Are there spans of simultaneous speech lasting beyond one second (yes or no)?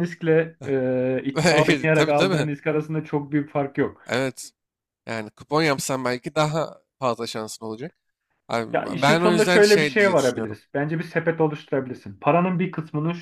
yes